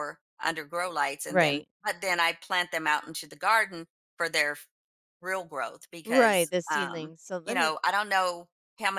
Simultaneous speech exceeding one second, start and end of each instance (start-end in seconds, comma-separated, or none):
6.0-7.7